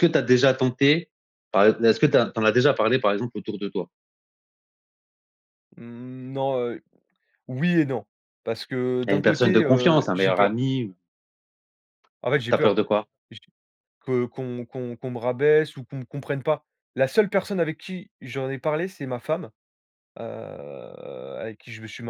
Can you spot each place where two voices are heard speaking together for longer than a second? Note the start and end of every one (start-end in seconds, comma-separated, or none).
9.1-10.6